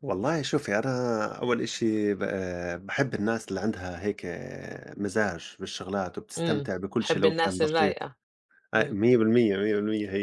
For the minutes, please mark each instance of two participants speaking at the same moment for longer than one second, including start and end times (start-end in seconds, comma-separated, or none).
6.4-8.0